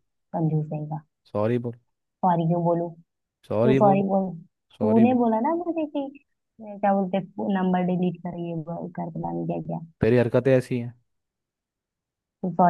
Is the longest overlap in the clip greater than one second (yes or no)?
no